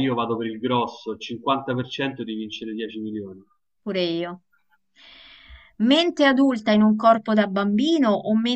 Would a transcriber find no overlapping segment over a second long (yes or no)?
yes